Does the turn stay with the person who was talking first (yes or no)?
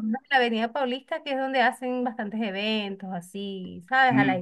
yes